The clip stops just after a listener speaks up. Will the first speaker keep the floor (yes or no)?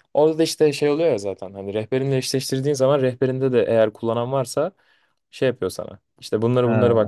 yes